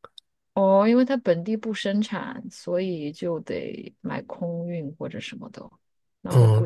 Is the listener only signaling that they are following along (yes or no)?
no